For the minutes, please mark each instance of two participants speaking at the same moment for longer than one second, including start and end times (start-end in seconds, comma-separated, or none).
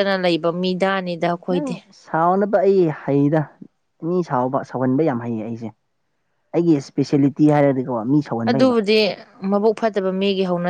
none